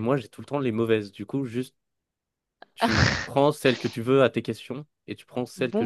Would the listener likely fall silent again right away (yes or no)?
no